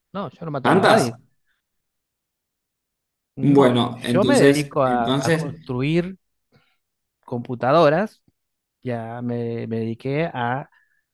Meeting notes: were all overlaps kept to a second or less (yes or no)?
no